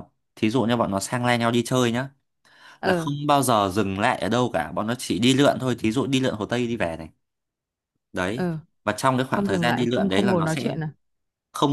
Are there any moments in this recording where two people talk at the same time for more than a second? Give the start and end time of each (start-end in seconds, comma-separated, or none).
9.3-10.7